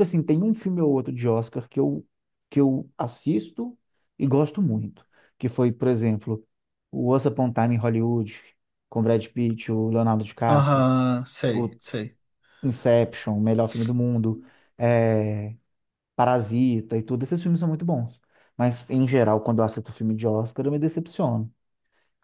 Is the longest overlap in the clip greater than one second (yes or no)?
no